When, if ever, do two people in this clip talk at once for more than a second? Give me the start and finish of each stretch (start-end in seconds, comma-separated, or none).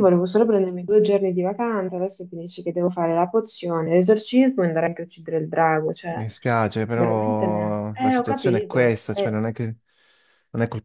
6.9-9.4